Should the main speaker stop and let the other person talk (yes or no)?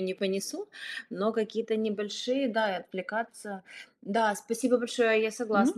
no